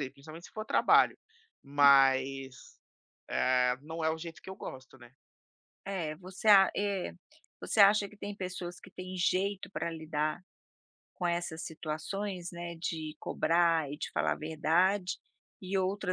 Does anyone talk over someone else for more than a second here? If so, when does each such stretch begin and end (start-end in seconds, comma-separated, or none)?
none